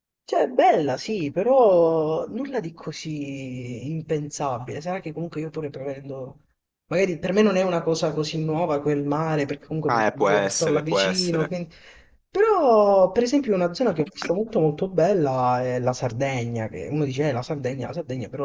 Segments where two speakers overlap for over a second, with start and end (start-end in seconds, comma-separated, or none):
9.9-11.5